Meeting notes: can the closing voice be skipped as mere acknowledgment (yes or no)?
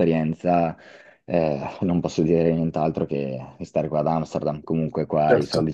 yes